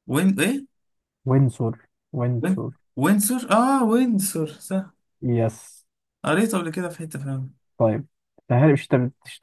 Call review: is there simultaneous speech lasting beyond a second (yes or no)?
no